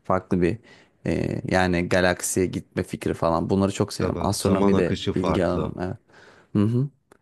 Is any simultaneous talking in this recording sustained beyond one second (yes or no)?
yes